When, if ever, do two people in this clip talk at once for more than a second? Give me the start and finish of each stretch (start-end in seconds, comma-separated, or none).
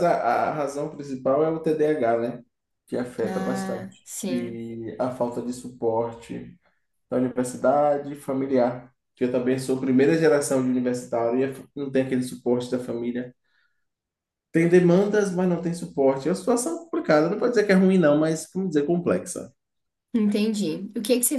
3.2-4.6